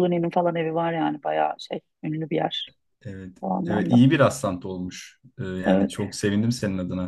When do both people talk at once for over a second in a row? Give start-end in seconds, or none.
none